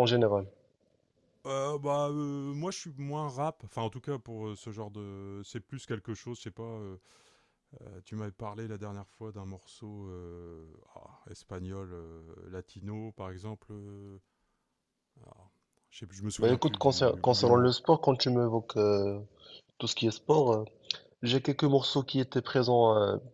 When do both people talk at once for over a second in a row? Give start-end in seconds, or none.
16.4-17.7